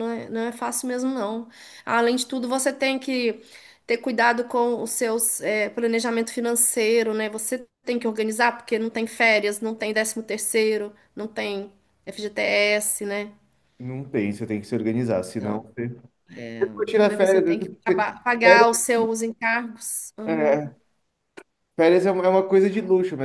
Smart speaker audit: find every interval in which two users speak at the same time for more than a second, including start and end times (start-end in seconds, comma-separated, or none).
17.1-18.7